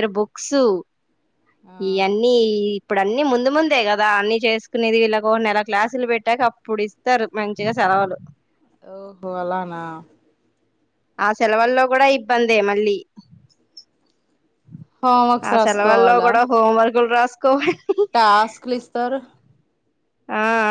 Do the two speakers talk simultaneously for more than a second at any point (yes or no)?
no